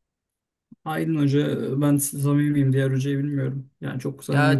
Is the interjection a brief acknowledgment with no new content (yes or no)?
no